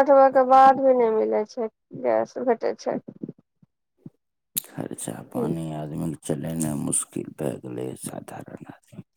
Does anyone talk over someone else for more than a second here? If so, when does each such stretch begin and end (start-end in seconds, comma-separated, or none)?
none